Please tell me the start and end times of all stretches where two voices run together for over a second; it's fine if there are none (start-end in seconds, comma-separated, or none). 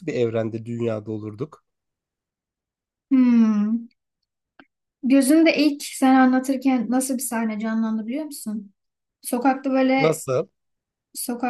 none